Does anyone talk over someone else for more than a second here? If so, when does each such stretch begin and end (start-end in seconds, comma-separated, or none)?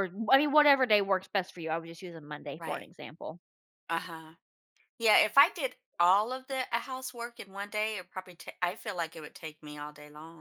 none